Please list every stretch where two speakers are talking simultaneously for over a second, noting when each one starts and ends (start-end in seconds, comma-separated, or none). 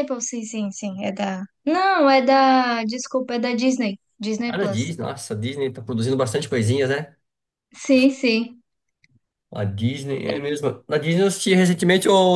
none